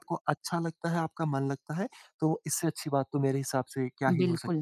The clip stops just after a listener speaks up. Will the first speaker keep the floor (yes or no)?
no